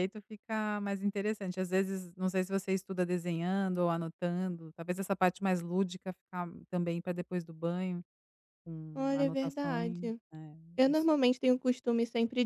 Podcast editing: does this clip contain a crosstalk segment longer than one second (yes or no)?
yes